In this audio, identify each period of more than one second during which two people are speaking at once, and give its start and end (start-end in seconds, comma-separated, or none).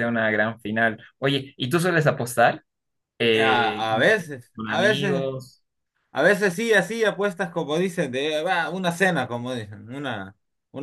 3.3-5.3